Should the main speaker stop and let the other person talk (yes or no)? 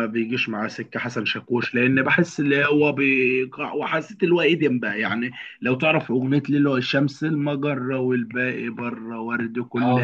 no